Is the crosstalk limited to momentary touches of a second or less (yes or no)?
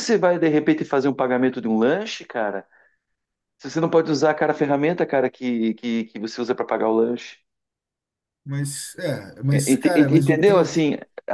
no